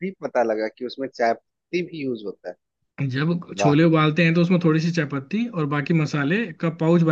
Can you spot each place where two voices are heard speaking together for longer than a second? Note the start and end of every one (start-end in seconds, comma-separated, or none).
none